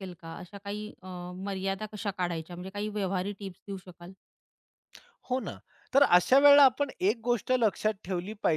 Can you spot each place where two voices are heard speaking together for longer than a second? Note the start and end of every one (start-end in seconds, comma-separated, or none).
none